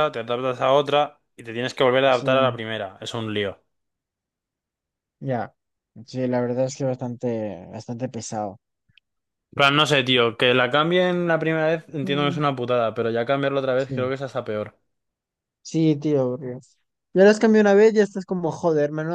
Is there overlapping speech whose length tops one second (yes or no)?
no